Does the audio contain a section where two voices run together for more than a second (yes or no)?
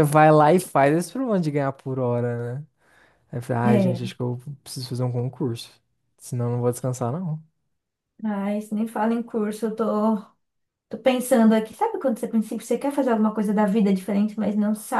no